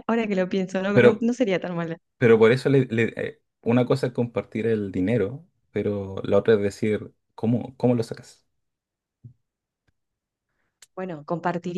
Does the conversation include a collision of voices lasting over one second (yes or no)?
no